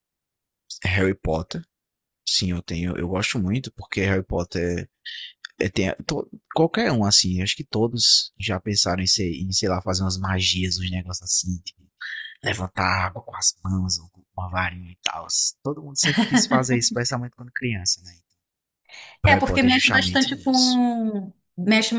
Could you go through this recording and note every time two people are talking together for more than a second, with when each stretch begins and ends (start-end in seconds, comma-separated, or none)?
19.2-20.8